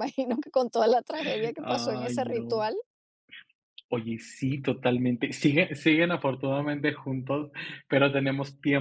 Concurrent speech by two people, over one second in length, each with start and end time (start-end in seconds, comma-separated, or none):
1.2-2.6